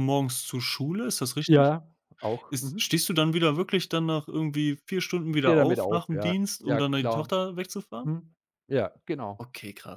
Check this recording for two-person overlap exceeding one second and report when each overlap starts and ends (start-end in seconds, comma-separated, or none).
5.3-7.3